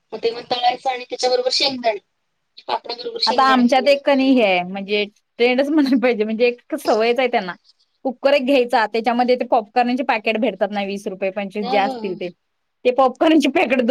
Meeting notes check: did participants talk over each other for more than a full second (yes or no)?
yes